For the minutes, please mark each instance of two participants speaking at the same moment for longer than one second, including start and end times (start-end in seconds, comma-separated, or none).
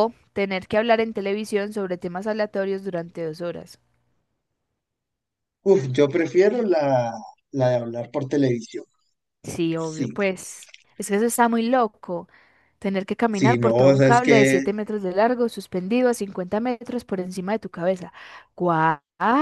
13.3-14.6